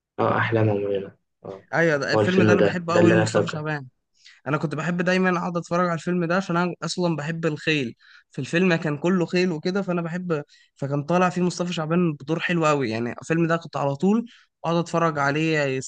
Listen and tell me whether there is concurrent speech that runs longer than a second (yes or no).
yes